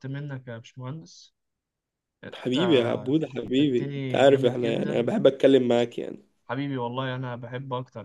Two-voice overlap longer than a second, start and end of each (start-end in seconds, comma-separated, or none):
3.6-5.1